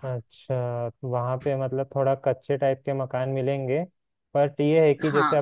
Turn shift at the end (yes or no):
no